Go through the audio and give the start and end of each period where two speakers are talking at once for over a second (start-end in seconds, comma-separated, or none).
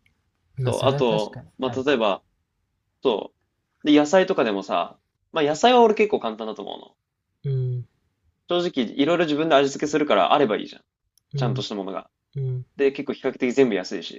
0.6-2.0